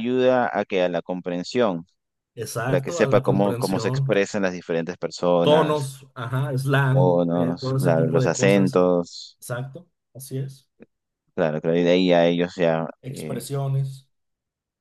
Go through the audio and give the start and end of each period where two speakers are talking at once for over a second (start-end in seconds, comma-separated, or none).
2.6-4.1, 6.9-8.8